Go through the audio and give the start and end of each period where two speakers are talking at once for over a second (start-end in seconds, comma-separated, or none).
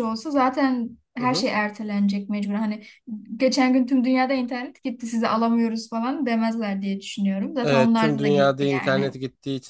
7.6-9.1